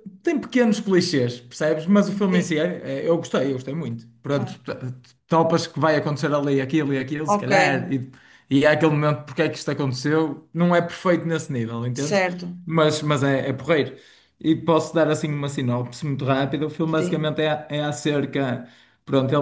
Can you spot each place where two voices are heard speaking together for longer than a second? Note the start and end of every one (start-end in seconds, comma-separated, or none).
none